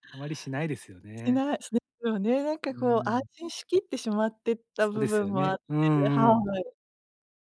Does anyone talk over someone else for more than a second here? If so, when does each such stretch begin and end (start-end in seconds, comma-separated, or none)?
4.8-6.2